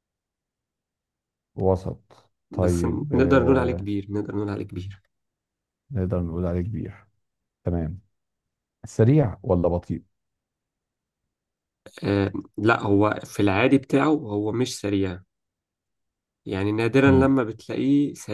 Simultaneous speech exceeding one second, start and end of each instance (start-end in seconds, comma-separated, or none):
2.5-3.9